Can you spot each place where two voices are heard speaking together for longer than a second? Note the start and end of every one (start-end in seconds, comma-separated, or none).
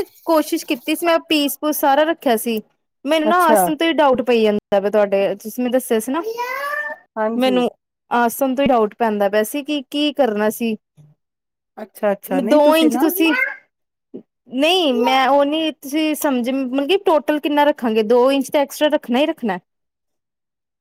none